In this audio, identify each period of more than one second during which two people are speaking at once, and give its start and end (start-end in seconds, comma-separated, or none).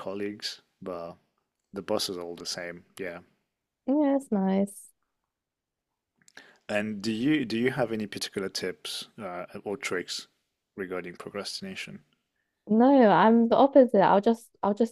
none